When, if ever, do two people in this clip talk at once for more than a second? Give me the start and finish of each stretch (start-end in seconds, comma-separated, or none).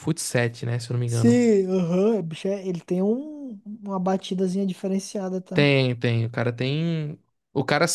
none